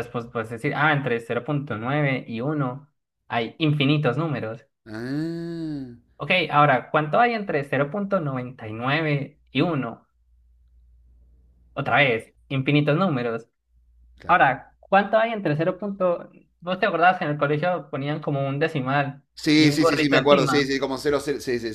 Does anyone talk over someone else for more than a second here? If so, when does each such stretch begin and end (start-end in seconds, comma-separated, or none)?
19.3-20.7